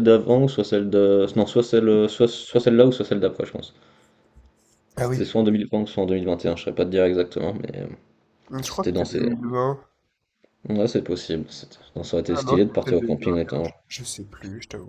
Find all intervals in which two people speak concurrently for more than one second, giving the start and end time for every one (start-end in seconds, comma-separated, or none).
12.3-13.7